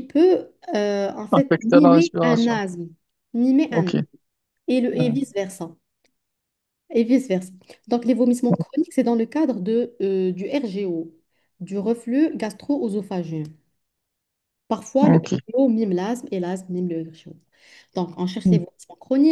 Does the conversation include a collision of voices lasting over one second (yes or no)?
yes